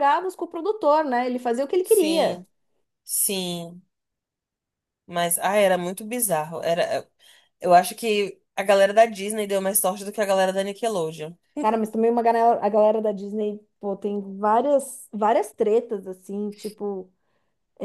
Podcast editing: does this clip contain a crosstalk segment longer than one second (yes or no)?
no